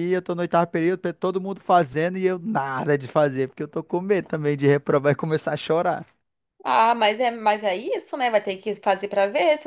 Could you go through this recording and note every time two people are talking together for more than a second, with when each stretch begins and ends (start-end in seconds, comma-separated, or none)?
none